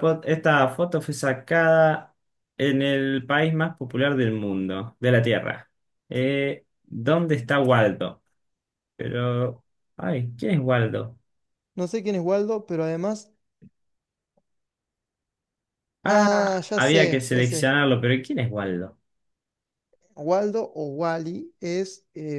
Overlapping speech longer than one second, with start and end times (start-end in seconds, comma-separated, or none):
16.1-17.8